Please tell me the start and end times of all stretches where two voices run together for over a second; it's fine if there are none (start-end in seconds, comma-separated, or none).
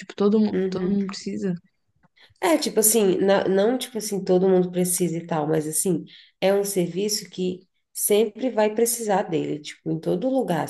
none